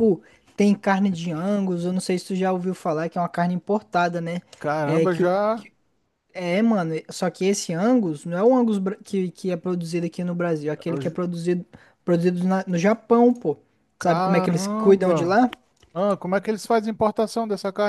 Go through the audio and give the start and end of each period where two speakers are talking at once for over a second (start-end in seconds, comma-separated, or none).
14.0-15.4